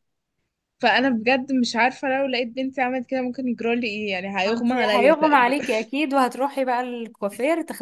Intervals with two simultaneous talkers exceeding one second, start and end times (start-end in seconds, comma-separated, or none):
4.4-5.6